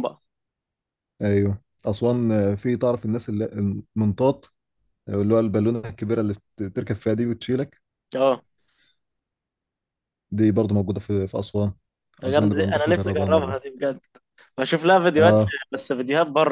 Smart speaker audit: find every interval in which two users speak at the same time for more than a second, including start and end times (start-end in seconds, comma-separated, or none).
12.2-13.6